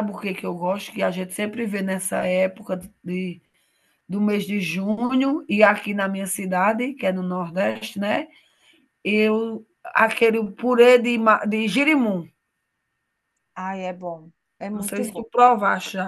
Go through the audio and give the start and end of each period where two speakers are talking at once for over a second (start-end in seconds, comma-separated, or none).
none